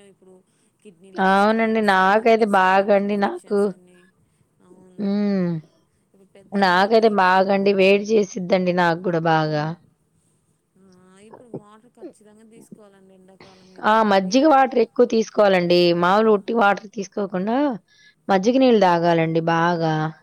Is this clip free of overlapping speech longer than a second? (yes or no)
no